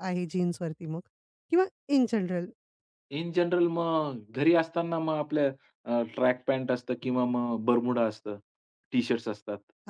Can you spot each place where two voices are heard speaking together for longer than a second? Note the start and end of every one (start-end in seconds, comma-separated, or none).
none